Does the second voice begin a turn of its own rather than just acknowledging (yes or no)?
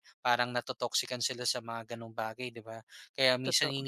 no